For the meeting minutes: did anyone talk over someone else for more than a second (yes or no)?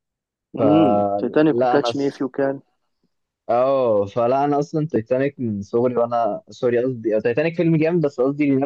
yes